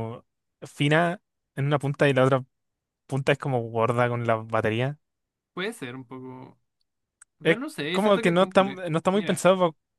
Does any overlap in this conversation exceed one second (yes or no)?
yes